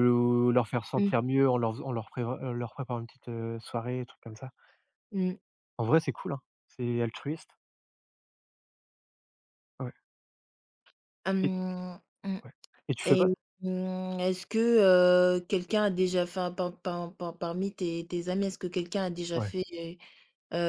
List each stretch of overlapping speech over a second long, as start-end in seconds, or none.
none